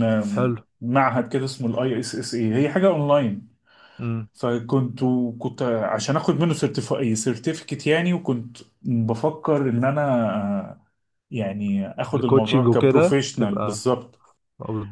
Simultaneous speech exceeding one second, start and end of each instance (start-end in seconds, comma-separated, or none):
12.1-13.9